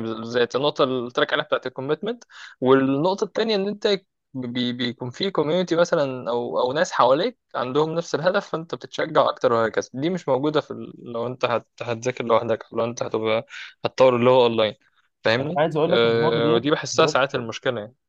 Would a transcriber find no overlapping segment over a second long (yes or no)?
no